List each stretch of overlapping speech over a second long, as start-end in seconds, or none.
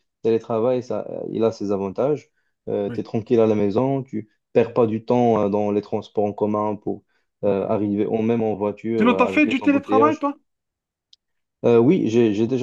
9.0-10.2